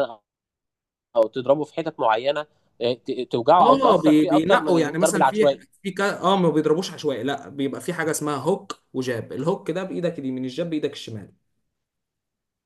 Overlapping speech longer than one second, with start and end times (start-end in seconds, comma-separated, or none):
3.6-5.6